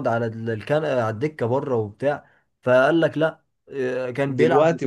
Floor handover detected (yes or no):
no